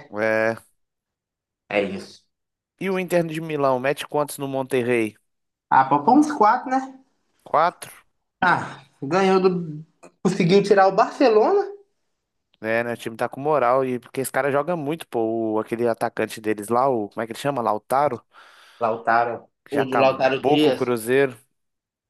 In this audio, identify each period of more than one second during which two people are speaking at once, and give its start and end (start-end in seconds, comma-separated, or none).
19.6-21.0